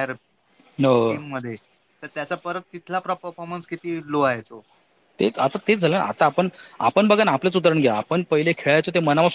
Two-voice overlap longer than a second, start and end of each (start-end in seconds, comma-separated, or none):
none